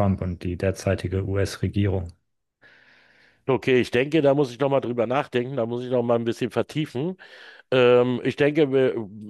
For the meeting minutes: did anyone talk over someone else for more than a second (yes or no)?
no